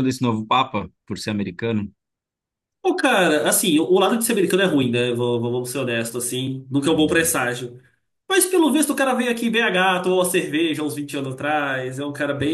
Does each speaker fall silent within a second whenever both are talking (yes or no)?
yes